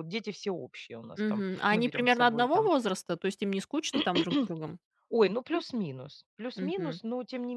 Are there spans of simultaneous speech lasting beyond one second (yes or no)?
yes